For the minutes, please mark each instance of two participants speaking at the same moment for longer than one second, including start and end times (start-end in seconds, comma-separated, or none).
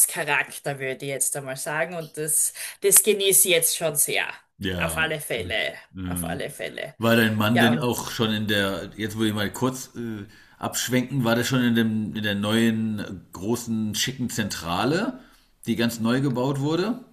none